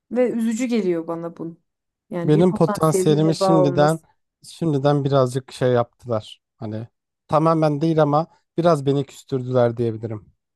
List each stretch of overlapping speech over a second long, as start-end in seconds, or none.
2.2-4.0